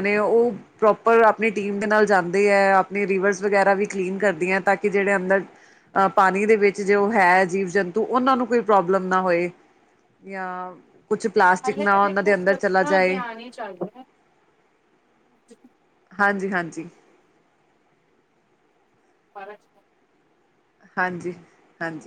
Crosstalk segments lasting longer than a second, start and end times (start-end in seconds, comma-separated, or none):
11.6-13.2